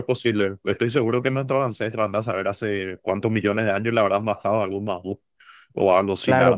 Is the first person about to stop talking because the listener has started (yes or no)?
yes